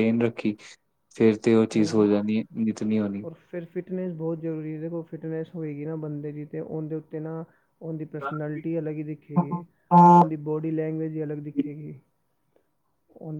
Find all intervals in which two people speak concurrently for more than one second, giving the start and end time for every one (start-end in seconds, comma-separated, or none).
none